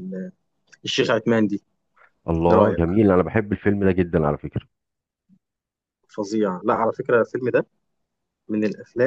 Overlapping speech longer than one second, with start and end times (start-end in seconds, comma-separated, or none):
none